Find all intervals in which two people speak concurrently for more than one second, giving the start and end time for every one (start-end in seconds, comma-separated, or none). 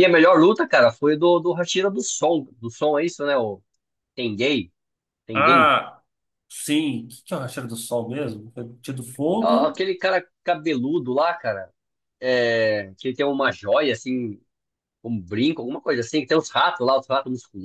none